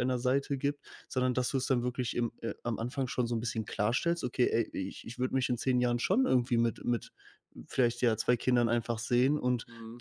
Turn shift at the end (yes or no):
no